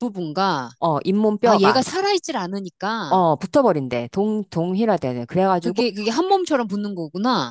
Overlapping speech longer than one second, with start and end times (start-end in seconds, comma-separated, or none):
none